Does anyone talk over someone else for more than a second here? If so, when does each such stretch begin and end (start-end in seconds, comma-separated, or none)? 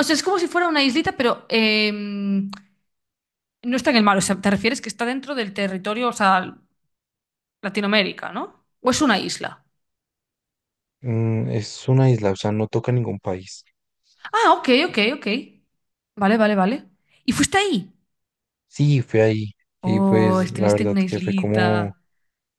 19.8-21.9